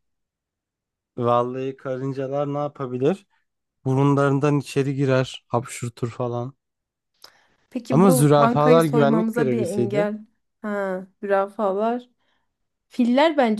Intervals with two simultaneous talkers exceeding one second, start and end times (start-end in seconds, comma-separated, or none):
7.9-10.1